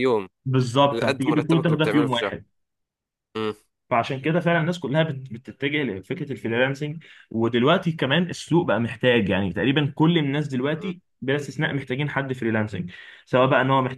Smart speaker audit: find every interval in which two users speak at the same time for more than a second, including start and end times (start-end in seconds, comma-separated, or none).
0.9-2.3